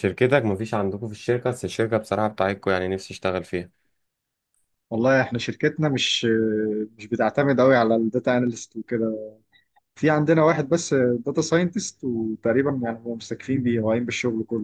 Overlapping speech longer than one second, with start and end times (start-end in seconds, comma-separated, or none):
none